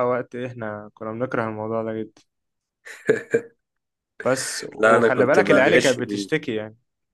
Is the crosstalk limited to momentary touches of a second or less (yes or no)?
no